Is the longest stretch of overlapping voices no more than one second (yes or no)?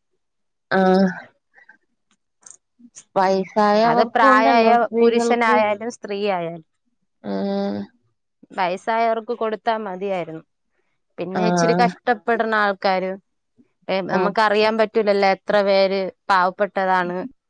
no